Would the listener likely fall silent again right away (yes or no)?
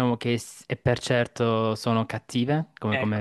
no